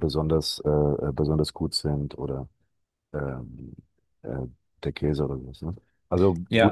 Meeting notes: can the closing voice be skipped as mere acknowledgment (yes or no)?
no